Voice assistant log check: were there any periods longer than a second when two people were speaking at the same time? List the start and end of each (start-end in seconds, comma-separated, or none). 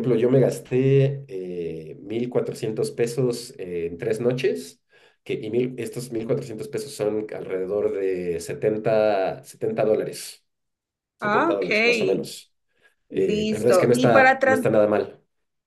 13.1-14.7